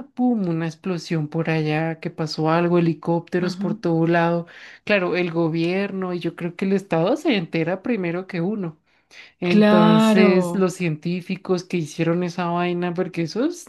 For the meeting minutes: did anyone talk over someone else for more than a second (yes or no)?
yes